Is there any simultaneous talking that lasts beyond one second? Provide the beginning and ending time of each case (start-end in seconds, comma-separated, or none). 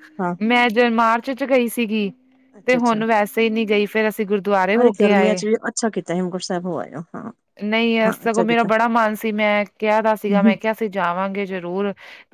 none